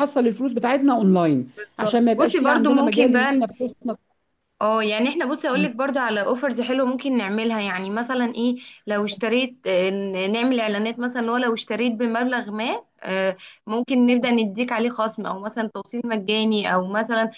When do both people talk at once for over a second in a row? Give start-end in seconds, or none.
1.6-3.5